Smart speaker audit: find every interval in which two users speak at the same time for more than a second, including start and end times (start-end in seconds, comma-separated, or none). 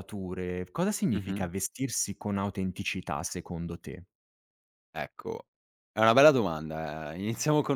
none